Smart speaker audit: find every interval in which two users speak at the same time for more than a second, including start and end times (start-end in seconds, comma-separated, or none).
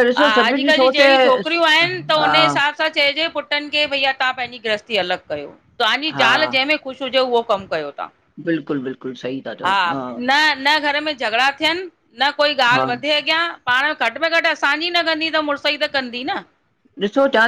0.5-2.3